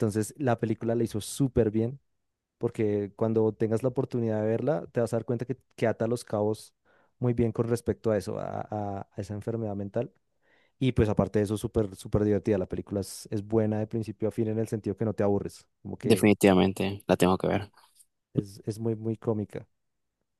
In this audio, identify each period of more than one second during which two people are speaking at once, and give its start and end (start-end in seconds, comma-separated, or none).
none